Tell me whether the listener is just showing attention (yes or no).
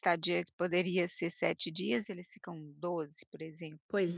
no